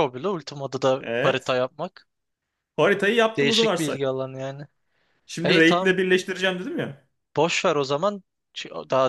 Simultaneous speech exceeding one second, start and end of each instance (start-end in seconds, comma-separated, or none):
none